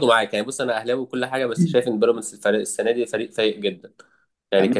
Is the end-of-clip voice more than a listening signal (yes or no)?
no